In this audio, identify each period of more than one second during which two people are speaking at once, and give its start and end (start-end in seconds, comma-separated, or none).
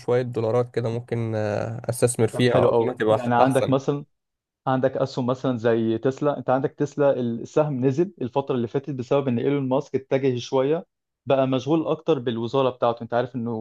2.3-3.8